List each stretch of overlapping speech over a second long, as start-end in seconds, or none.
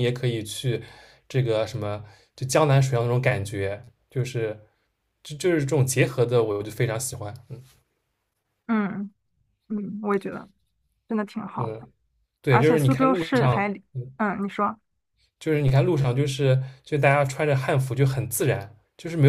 12.5-14.1